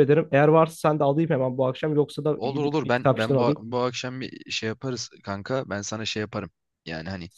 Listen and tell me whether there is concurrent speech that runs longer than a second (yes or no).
yes